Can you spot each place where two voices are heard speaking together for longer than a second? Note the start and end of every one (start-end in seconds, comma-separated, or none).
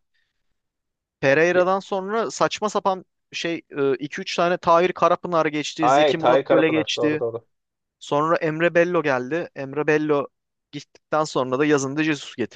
5.8-7.2